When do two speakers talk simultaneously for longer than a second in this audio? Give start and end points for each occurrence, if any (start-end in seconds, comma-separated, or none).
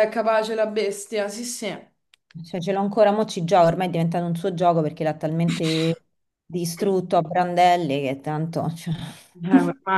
none